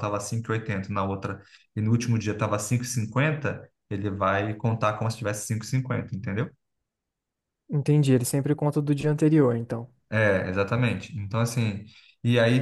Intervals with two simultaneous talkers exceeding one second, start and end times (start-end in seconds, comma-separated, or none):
none